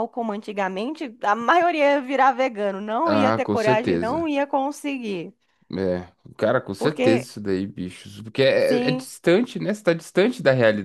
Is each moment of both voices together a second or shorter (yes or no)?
no